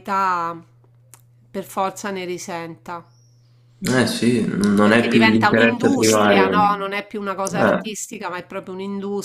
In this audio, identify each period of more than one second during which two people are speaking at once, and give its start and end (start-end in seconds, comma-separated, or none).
4.8-7.8